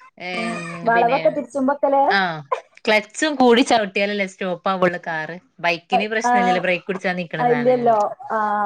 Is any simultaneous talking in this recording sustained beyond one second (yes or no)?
yes